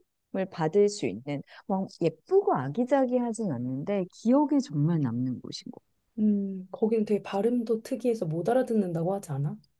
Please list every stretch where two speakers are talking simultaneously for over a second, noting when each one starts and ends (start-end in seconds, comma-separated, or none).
none